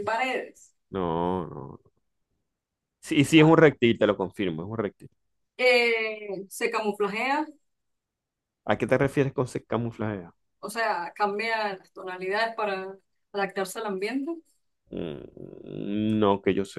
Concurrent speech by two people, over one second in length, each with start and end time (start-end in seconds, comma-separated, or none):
none